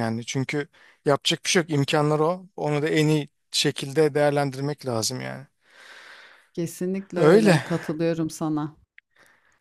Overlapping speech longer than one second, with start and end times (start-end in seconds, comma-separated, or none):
none